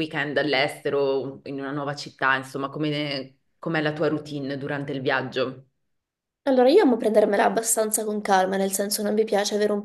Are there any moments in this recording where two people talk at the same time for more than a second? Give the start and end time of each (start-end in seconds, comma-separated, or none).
none